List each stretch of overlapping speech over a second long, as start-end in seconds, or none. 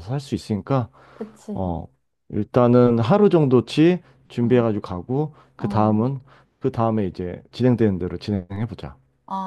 none